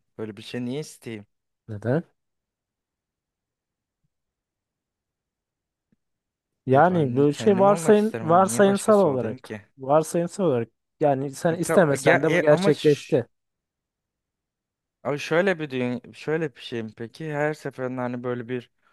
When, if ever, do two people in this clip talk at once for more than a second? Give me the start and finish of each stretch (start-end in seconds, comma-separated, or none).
6.7-9.6, 11.5-13.2